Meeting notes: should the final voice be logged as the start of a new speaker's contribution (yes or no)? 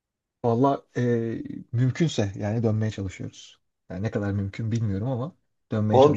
yes